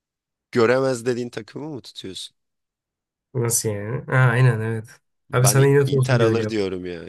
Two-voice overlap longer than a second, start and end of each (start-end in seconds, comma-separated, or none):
5.3-6.6